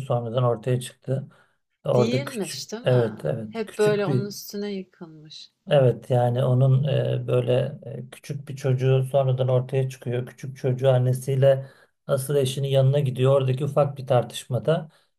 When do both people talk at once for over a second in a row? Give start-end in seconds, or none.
1.9-4.2